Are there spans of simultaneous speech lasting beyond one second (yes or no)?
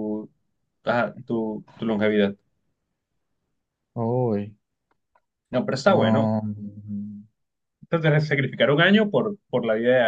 no